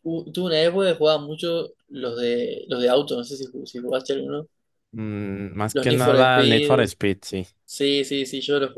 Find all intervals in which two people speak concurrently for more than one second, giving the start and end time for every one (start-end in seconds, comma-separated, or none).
5.7-6.9